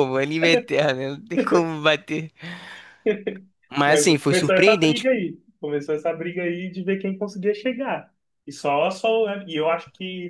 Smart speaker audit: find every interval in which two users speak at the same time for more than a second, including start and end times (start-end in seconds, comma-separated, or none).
3.9-5.1